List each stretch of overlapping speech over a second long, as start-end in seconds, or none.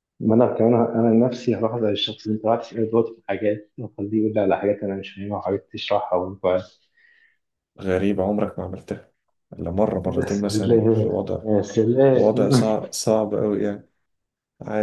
10.1-11.4